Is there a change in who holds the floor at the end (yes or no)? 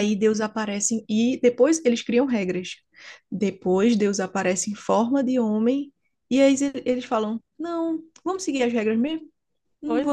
no